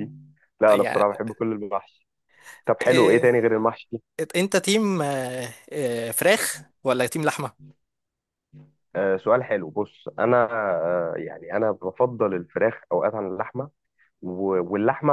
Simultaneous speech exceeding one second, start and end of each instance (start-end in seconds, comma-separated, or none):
none